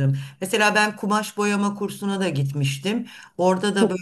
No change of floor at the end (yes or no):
yes